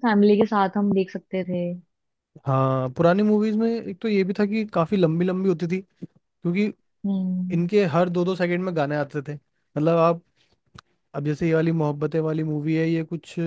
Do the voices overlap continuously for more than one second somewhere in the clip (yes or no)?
no